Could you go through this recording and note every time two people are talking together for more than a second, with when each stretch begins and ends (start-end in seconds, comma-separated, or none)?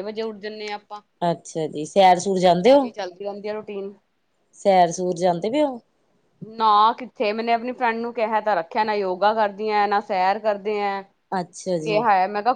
none